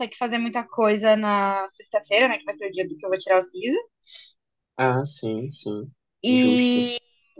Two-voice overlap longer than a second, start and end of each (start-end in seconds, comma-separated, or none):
none